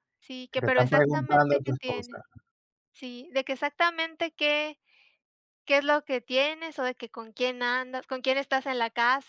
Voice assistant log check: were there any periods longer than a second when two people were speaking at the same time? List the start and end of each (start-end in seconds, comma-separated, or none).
0.5-2.2